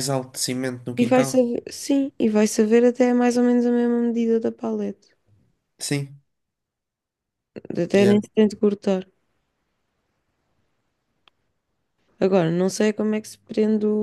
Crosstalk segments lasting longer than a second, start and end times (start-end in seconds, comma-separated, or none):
none